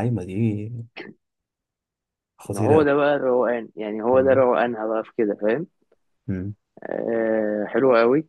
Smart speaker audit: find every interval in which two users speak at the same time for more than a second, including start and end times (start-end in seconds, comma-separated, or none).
none